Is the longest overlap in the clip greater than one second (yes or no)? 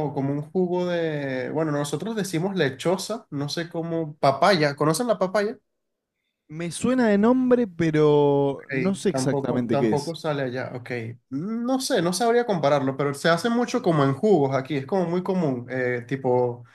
yes